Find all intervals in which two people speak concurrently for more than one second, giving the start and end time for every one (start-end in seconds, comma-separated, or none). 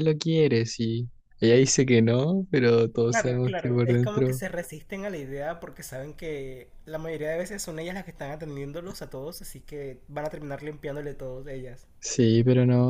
3.1-4.4